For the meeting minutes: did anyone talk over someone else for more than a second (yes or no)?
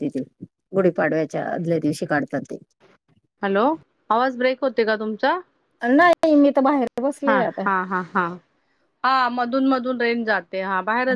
no